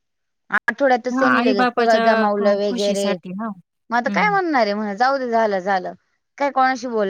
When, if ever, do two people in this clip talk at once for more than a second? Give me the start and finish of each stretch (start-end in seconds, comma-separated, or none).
1.1-3.1